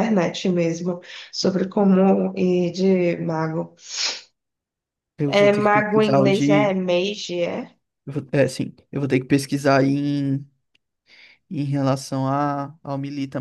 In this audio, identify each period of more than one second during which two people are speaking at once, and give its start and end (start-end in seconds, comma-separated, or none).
5.3-6.7